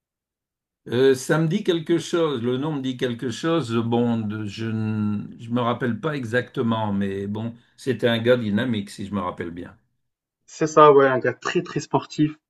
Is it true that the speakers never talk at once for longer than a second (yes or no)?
yes